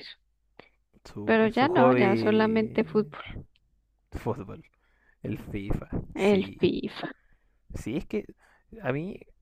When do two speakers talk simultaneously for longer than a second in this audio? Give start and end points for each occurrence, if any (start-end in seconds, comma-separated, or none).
1.2-3.0